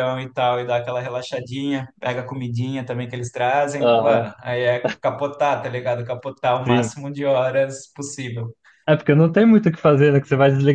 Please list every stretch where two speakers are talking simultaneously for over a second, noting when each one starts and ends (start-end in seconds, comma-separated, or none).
none